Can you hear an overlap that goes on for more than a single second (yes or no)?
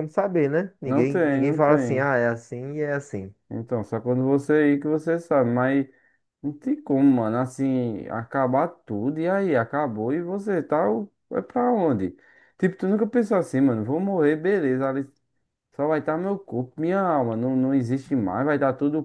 yes